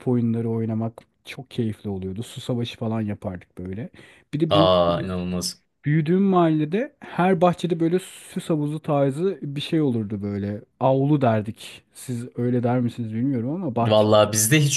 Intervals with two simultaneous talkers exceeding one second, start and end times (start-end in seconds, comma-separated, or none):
none